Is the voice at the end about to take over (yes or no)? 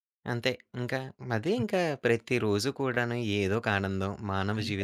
no